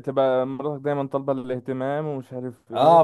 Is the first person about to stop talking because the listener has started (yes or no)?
yes